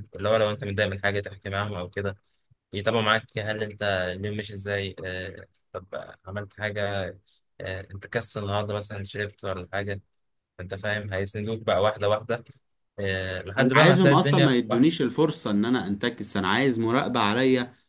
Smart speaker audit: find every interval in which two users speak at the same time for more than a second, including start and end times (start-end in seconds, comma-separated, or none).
13.6-14.9